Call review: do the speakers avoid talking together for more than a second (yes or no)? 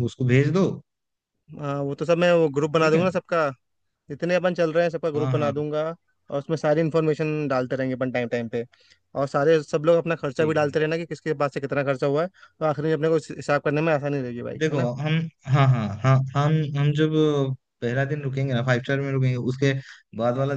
yes